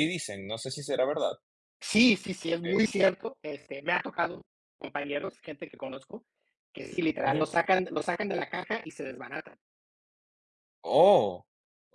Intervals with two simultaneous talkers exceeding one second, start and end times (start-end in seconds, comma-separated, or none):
none